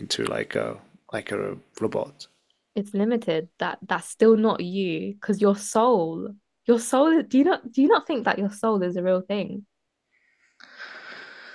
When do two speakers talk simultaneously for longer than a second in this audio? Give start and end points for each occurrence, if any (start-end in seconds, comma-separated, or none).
none